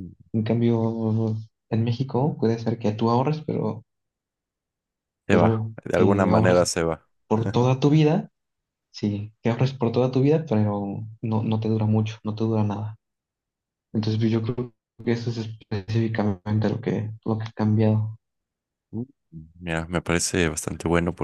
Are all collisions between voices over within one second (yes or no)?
no